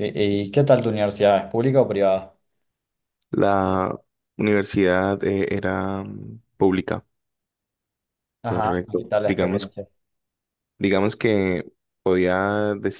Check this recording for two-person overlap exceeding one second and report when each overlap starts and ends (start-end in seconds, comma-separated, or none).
8.4-9.7